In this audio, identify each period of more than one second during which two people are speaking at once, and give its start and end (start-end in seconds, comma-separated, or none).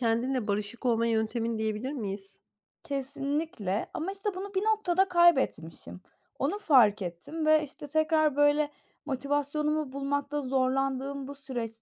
none